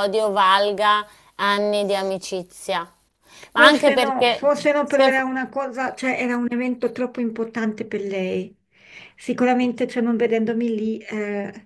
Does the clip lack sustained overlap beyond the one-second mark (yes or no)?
no